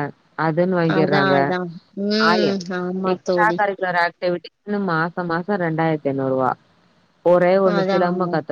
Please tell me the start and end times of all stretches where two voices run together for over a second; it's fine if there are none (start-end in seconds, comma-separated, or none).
none